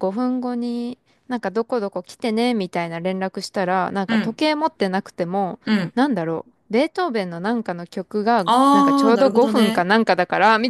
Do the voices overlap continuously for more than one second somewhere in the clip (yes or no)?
yes